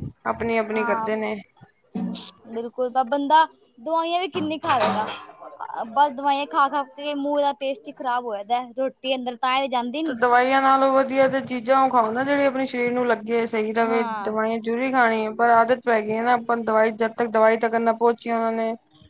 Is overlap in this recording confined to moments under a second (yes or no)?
yes